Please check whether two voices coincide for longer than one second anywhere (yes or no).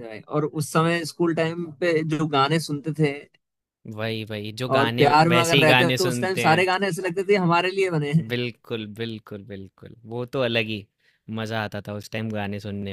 yes